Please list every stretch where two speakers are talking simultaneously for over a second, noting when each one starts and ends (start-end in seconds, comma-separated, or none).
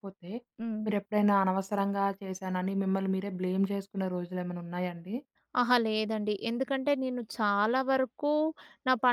none